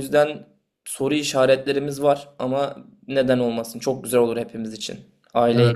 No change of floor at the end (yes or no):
no